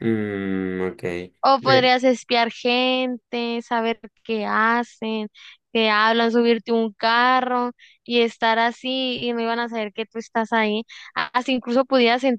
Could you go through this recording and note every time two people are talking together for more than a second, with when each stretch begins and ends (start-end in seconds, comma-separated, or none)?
none